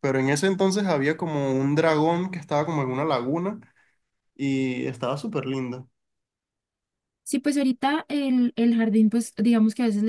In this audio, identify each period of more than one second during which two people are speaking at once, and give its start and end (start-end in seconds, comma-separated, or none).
none